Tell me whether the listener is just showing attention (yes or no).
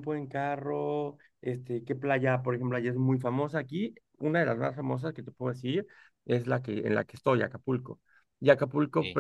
yes